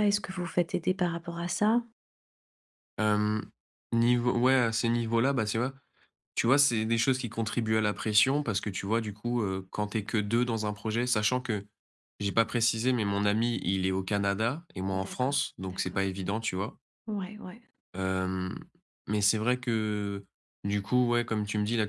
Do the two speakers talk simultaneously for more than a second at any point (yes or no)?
yes